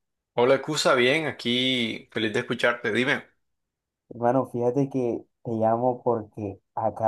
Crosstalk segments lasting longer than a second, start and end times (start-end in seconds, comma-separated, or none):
none